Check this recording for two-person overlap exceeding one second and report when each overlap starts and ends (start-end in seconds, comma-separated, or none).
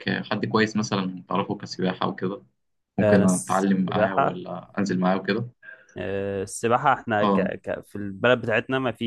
3.0-4.4